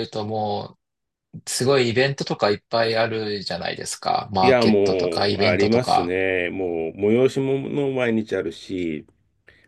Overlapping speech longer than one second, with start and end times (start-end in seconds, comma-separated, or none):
4.4-6.1